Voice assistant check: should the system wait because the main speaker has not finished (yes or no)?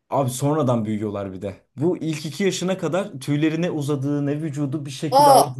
yes